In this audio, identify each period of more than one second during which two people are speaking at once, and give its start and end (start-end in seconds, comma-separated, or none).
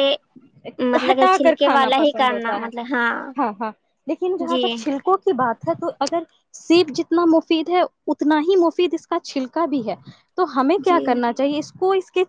1.1-2.7